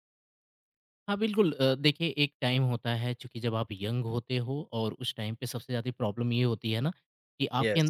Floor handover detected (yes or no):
no